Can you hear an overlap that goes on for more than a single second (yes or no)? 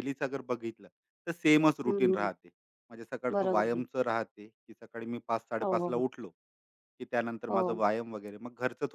no